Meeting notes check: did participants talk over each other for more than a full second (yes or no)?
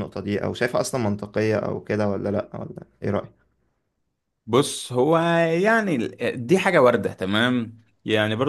no